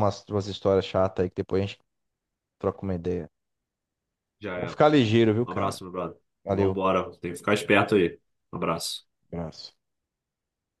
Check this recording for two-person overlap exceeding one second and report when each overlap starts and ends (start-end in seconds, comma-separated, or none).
none